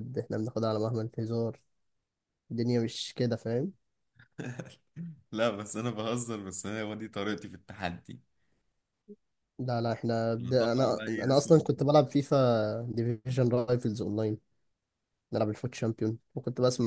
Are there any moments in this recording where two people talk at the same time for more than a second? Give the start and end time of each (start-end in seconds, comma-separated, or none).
10.4-11.8